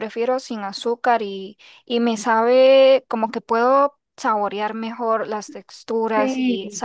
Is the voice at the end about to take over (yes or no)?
no